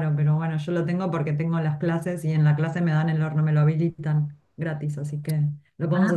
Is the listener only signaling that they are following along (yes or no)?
no